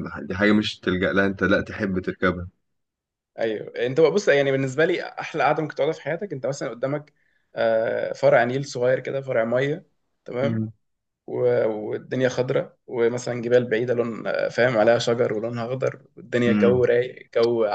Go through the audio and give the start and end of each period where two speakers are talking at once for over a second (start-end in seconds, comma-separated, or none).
none